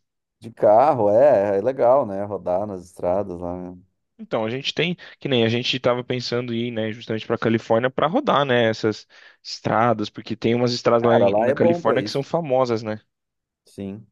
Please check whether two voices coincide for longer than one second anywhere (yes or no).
yes